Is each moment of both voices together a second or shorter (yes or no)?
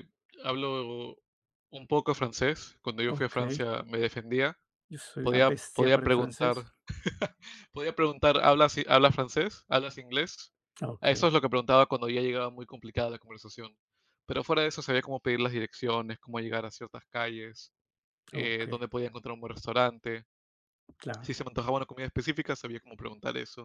no